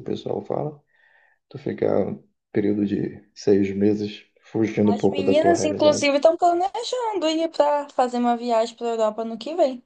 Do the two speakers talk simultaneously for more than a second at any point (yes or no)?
yes